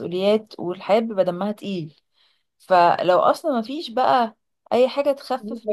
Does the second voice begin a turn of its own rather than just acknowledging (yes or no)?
no